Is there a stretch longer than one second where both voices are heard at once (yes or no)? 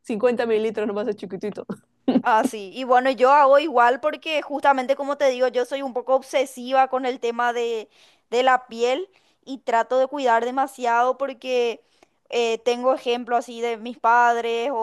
no